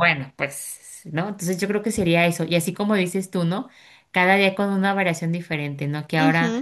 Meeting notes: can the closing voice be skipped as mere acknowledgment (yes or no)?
yes